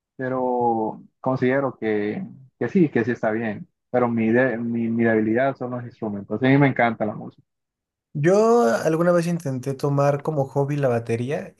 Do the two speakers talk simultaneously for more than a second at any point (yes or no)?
no